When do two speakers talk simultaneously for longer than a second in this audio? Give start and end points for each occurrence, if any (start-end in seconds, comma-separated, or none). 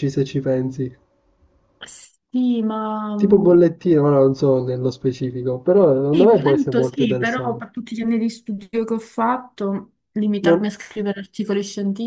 6.1-7.7